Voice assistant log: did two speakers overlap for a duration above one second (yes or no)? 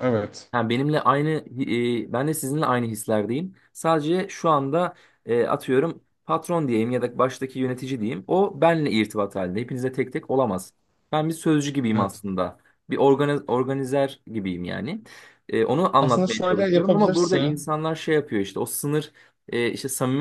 yes